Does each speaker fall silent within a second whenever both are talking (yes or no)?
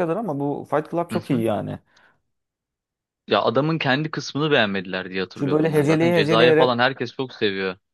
no